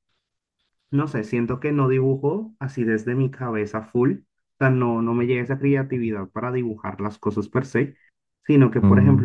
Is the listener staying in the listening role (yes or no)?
yes